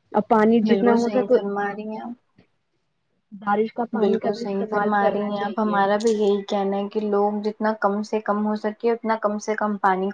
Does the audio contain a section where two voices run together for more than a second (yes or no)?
yes